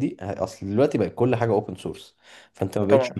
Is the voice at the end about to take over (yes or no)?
no